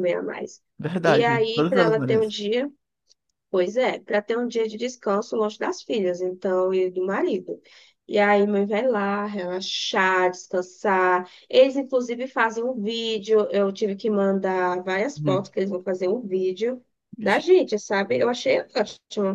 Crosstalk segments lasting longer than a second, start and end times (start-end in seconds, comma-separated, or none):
1.1-2.4